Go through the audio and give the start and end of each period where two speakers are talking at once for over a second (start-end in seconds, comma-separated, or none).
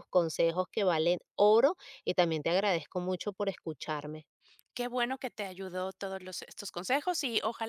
none